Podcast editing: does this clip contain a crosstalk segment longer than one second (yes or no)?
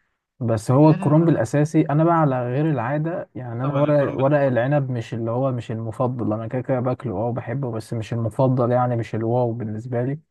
yes